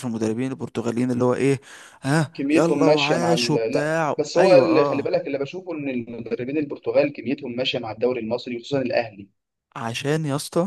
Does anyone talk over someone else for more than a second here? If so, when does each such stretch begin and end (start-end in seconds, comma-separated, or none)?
2.3-5.2